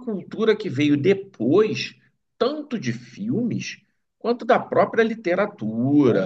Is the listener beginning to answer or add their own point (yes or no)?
no